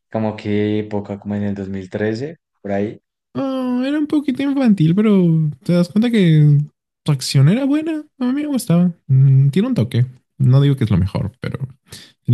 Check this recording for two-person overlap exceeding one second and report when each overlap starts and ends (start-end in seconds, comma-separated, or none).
none